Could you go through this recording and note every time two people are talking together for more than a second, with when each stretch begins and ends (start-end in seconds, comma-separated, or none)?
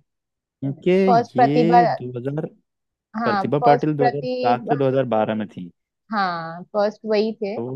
3.2-4.7